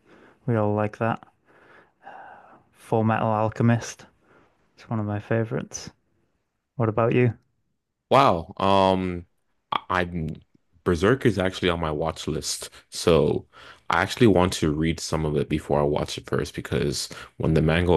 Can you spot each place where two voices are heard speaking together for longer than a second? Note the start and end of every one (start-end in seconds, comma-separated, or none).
none